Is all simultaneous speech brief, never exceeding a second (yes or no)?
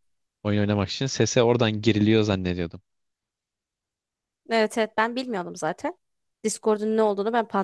yes